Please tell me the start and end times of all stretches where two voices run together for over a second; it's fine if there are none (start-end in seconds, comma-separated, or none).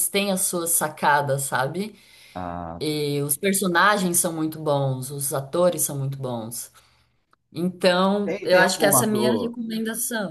8.2-9.6